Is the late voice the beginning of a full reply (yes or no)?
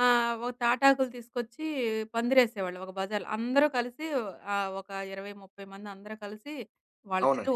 no